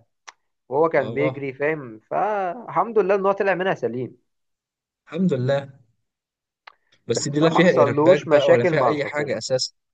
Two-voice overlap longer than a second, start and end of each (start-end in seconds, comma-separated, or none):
7.1-9.4